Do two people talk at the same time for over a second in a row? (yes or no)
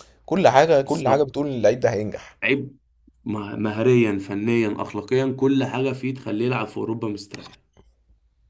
no